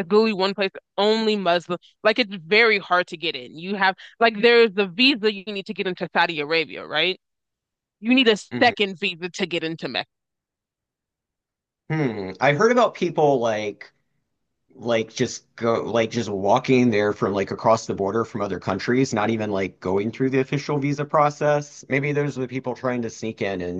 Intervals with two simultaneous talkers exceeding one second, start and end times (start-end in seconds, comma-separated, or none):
none